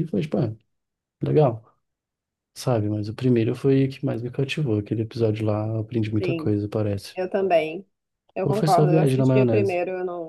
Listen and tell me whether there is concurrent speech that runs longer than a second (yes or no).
yes